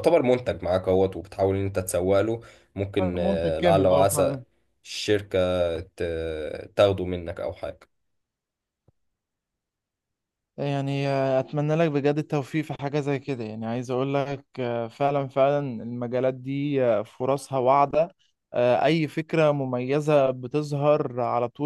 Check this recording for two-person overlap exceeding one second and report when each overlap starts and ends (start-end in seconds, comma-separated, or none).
3.0-4.3